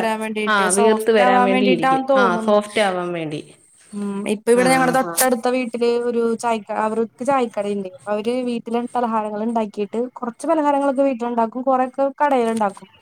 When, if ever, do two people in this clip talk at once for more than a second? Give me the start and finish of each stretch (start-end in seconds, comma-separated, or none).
0.5-2.6